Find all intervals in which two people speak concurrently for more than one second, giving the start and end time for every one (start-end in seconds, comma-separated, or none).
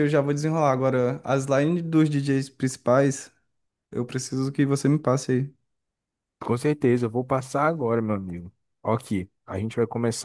none